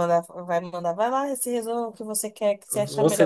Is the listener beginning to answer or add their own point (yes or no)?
yes